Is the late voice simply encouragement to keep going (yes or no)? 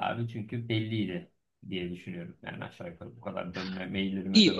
no